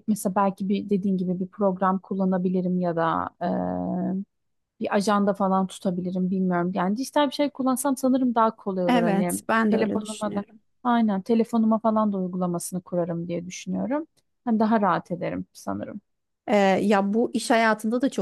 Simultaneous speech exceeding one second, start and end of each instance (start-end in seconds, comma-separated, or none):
8.9-10.4